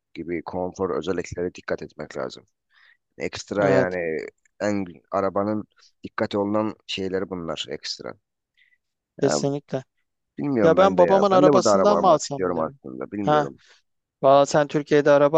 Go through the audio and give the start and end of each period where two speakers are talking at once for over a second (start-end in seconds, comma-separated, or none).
10.6-12.8